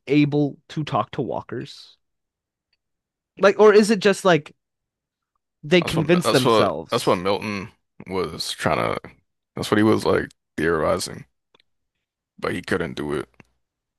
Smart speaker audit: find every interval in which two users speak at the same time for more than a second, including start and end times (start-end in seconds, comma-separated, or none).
5.8-7.2